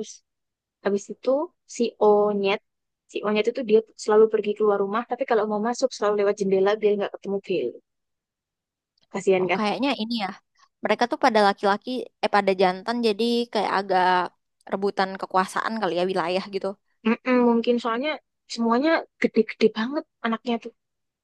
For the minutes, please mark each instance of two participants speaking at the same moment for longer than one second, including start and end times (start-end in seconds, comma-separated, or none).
none